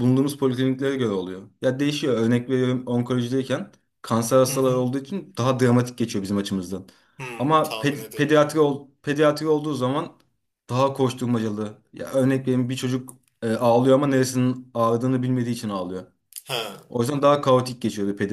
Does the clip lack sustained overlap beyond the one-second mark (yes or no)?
no